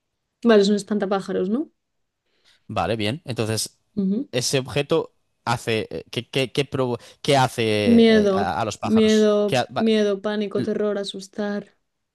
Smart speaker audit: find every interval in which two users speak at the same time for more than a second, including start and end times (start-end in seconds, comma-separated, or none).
7.8-9.8